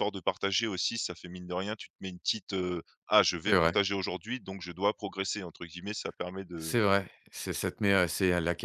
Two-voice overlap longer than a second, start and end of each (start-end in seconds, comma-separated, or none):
none